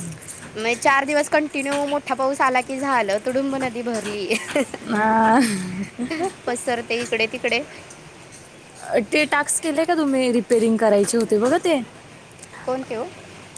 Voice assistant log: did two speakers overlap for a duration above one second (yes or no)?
no